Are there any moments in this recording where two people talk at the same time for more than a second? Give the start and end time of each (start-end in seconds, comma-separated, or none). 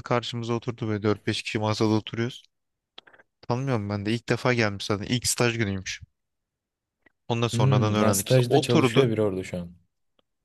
7.5-9.1